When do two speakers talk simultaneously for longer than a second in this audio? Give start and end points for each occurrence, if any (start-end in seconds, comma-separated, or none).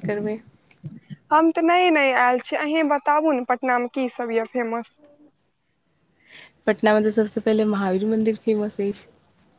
none